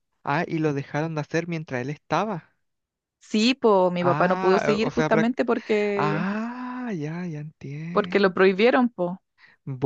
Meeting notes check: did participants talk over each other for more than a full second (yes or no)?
yes